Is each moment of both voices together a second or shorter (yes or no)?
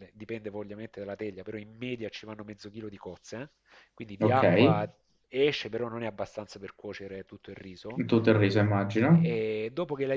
yes